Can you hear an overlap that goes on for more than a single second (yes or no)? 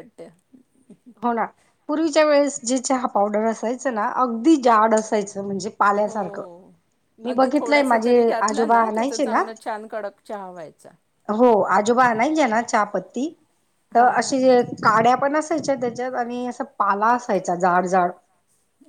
yes